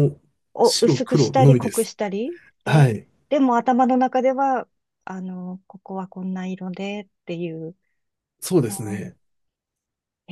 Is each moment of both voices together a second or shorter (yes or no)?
no